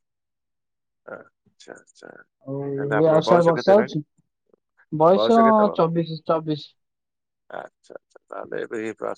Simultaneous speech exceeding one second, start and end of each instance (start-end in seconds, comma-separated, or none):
2.5-4.0